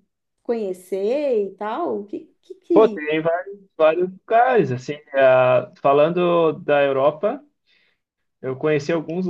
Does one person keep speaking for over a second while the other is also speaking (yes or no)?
no